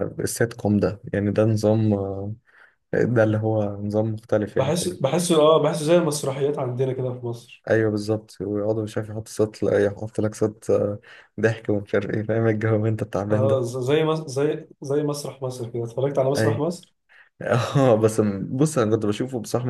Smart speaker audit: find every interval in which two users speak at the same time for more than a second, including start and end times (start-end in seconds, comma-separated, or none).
none